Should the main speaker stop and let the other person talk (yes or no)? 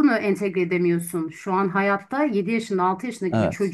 no